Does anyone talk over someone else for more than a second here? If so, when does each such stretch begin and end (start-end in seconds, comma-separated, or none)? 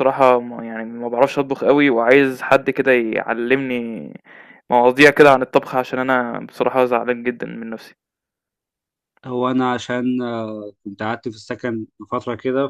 none